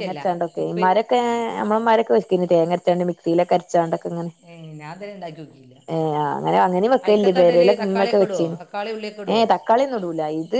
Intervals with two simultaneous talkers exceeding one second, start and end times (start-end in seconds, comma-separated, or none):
none